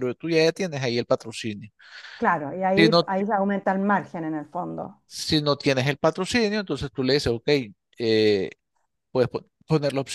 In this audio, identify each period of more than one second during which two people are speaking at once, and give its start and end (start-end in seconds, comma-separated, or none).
none